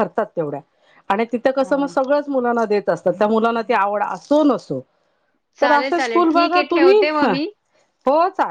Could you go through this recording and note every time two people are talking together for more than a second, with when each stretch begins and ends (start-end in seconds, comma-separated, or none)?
5.6-7.3